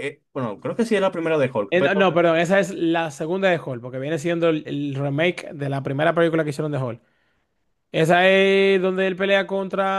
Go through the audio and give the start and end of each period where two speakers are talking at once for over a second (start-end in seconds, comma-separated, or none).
none